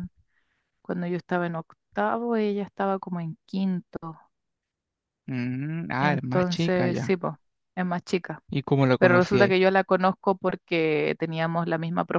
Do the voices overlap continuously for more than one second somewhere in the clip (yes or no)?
yes